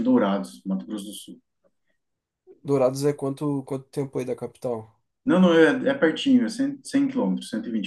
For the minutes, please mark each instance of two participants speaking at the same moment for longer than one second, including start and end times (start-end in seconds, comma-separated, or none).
none